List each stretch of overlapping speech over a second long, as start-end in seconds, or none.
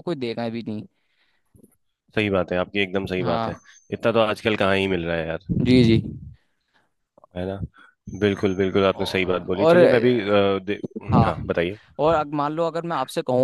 9.0-10.4